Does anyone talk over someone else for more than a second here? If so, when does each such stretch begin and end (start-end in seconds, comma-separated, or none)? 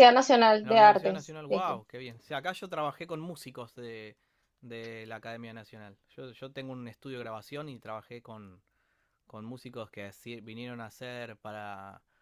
0.6-1.8